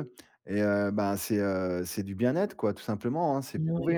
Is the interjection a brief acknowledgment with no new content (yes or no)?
yes